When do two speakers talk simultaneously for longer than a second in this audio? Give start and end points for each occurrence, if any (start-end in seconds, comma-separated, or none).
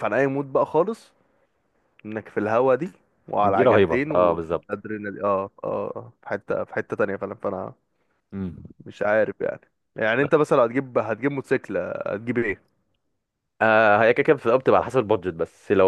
3.4-4.8